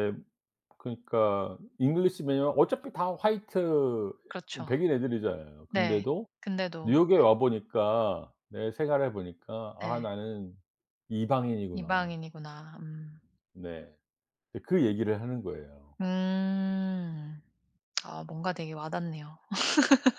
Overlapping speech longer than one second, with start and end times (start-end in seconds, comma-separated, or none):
none